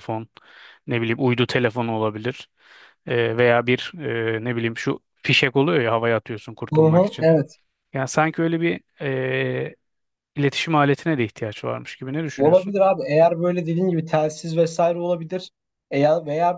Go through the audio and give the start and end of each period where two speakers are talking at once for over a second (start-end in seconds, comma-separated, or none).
none